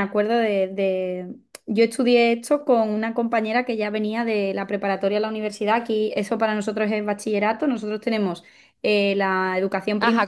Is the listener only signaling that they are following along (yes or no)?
no